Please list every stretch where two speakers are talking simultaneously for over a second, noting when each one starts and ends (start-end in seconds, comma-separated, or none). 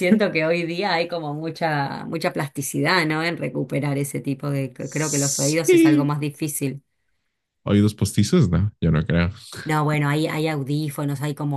4.8-6.1